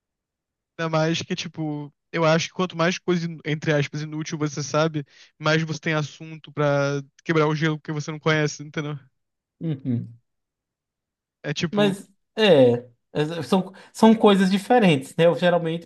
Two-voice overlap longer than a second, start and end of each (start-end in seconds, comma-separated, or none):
none